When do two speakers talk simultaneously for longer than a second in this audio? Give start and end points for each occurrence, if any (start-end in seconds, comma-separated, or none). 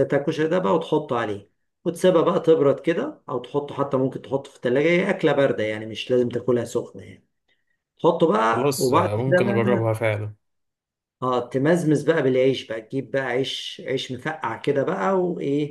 8.5-9.9